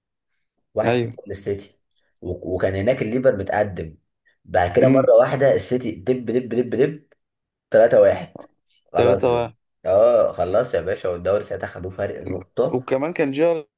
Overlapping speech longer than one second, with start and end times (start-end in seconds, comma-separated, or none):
none